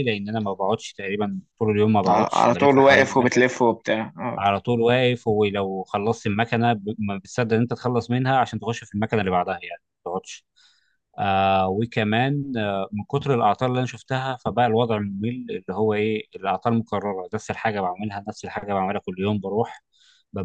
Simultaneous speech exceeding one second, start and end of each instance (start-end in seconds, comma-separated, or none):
2.1-3.4